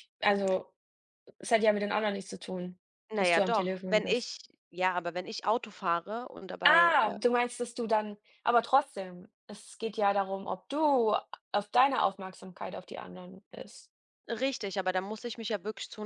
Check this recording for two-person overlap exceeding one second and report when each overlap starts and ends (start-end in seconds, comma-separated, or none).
3.1-4.4